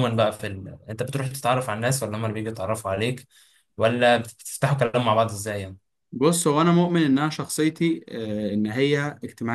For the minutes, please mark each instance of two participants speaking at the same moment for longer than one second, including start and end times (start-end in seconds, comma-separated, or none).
none